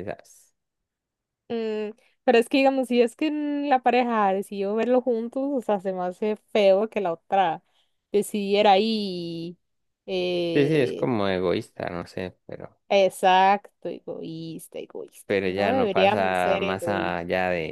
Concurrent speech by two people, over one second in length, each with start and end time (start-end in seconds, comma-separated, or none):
15.2-17.2